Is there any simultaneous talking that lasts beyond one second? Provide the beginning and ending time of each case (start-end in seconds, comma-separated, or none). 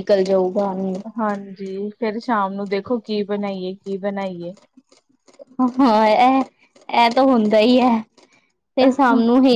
none